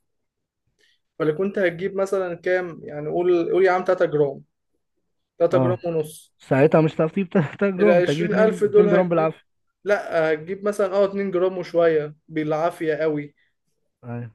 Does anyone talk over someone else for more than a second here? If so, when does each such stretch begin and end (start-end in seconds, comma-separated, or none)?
7.8-9.3